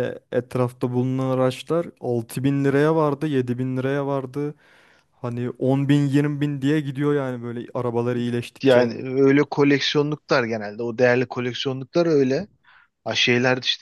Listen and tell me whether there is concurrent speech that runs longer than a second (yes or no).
no